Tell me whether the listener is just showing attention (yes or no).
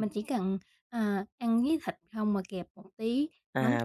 no